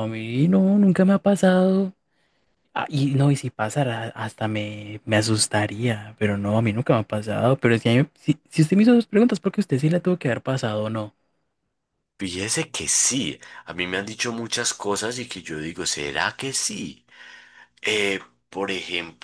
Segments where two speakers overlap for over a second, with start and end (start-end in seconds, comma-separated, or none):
none